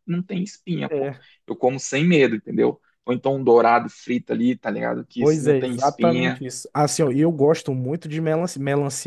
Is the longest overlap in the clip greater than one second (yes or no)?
yes